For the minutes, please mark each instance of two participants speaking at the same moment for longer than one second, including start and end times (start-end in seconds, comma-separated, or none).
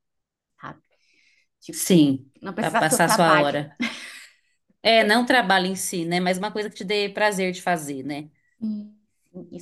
1.7-3.5